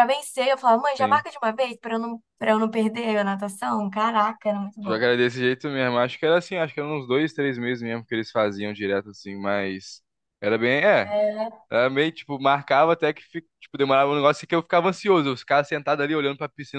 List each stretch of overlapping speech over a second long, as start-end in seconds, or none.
none